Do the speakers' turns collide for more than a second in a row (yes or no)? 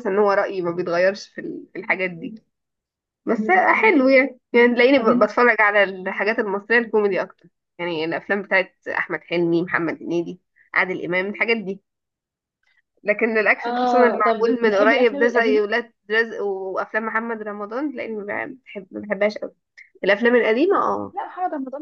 yes